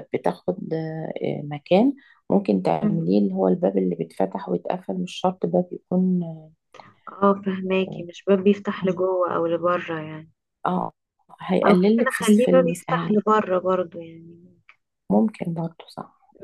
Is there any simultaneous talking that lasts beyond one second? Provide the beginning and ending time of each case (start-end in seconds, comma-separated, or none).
11.6-13.1